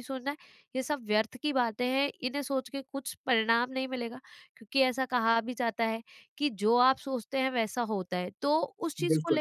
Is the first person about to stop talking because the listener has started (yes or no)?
no